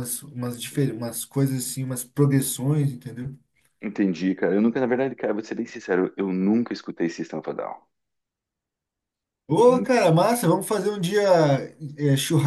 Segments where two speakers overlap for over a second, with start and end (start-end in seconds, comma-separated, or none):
none